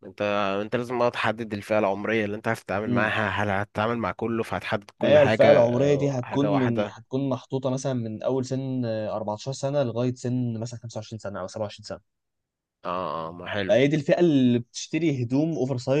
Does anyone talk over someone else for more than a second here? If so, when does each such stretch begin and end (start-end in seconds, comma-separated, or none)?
5.0-7.0